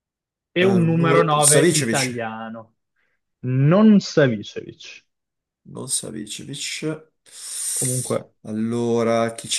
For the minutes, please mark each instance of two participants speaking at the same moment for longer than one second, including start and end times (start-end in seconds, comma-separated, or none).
0.6-2.1